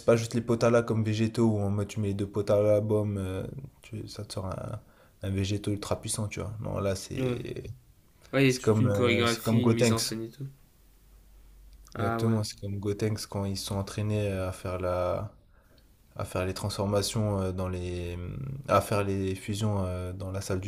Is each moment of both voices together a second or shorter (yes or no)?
no